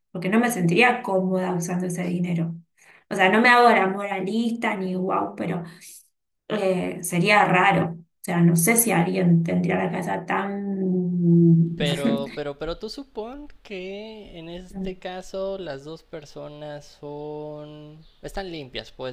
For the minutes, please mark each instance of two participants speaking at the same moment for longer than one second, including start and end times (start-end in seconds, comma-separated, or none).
none